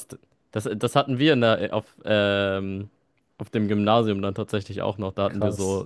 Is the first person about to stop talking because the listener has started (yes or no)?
no